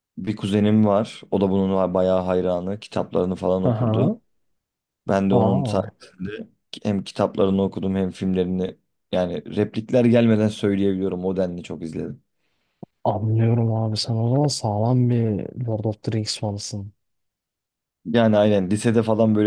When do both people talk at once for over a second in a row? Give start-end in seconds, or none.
none